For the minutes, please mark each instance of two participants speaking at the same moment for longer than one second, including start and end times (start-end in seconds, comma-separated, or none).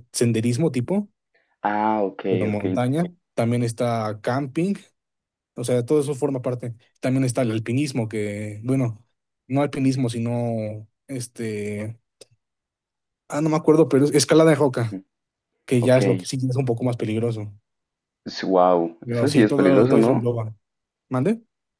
19.0-20.2